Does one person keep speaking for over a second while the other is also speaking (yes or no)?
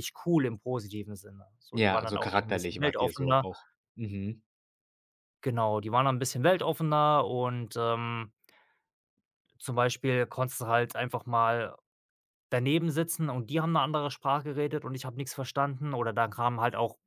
yes